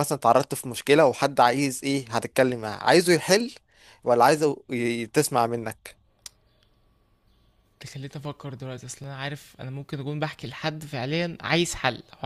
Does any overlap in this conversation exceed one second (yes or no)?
no